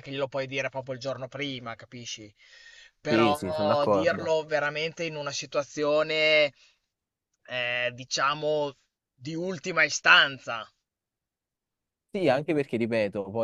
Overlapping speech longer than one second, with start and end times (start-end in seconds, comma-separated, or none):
3.1-4.3